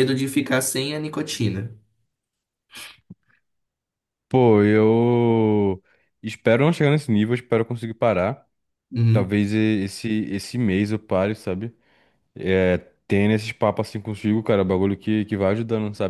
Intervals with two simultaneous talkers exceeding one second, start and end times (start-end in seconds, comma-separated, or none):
none